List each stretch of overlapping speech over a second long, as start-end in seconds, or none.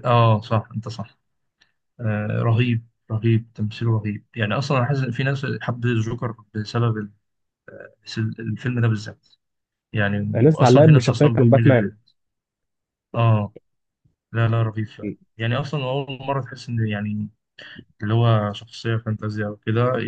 10.3-11.9